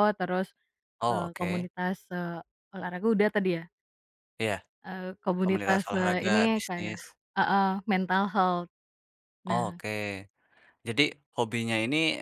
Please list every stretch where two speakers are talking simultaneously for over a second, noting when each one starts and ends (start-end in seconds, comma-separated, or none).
5.4-7.0